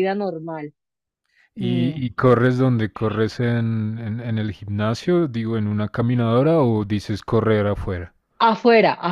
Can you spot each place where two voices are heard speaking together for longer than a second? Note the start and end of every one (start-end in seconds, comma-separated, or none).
none